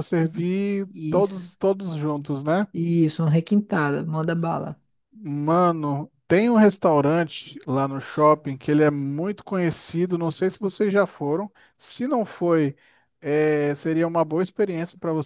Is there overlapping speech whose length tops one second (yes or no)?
no